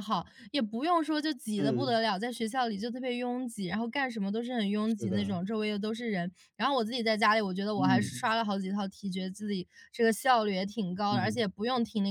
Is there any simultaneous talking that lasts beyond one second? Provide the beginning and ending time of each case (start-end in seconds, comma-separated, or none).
none